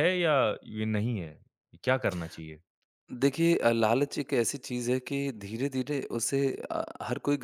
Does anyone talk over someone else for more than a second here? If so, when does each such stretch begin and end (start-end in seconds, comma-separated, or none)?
none